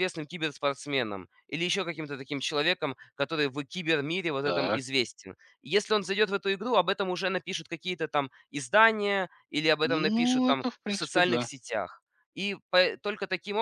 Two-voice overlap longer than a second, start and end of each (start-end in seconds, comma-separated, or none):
9.8-11.5